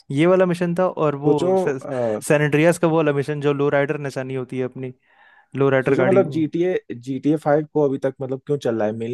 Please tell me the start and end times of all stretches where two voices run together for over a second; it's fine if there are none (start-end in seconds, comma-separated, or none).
none